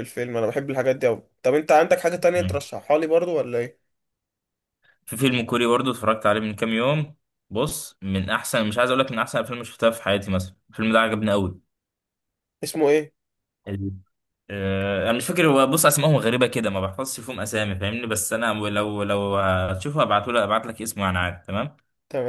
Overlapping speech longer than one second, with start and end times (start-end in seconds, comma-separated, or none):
none